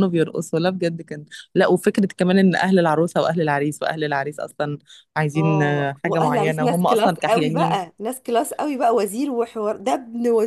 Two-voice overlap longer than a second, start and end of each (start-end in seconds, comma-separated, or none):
5.3-7.8